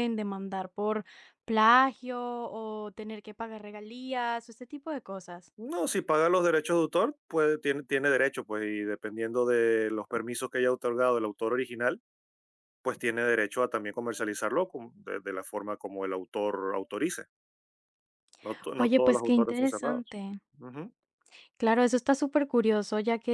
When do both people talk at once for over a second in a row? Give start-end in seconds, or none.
18.8-20.2